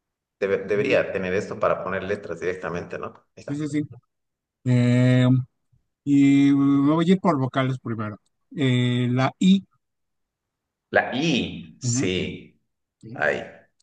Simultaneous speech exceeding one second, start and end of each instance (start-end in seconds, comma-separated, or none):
none